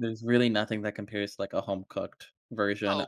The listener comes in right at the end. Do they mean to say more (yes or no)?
yes